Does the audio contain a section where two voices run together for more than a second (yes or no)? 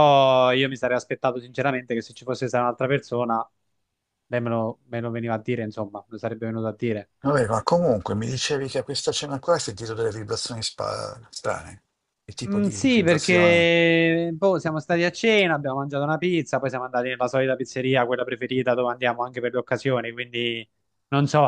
yes